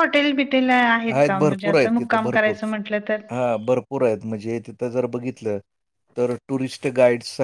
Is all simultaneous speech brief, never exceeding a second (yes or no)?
no